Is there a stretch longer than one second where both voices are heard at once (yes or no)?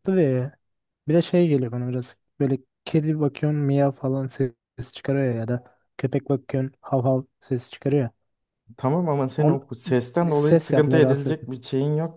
yes